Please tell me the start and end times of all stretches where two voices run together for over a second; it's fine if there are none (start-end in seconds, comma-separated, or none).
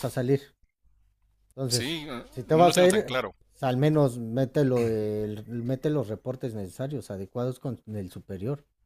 1.7-3.2